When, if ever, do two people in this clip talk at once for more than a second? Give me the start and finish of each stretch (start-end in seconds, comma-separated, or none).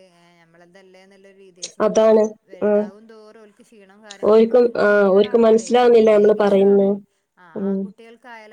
4.3-6.9